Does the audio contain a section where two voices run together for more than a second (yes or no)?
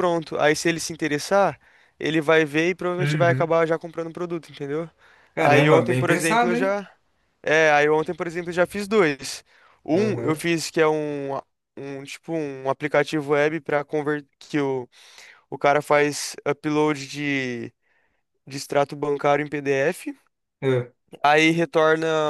yes